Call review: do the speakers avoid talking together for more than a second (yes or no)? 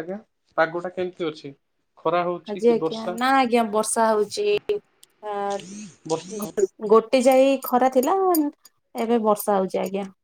yes